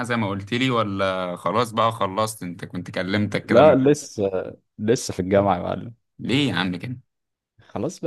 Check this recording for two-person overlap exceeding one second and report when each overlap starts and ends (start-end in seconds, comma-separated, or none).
none